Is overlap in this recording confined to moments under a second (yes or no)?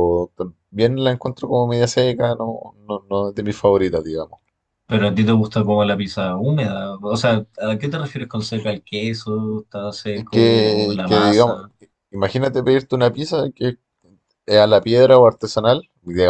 no